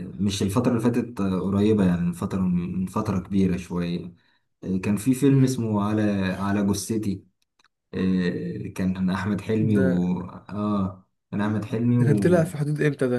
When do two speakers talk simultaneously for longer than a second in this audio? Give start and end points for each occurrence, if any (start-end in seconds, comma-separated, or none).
none